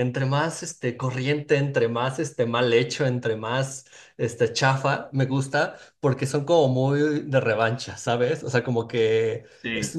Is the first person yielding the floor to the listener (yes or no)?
no